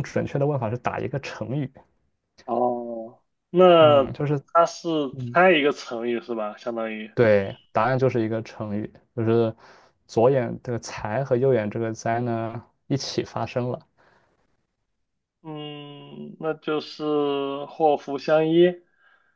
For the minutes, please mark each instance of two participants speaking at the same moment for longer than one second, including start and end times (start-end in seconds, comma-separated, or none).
none